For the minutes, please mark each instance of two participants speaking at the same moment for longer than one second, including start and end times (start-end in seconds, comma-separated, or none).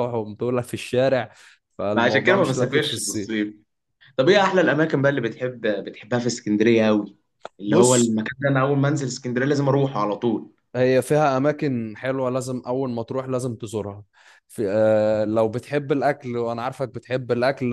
1.9-3.3